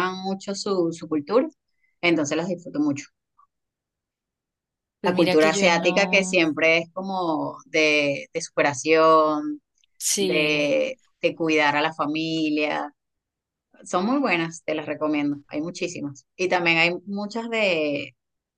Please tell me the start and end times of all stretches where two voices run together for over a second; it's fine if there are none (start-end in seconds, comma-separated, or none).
5.0-6.4